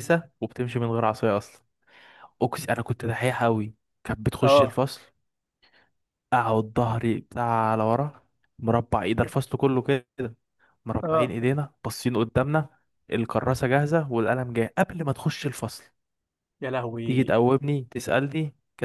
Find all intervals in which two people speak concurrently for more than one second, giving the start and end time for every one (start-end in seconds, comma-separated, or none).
none